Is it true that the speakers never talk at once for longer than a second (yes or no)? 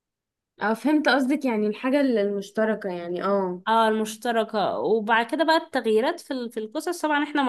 yes